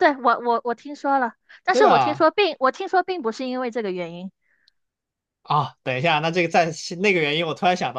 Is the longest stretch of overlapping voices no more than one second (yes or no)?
yes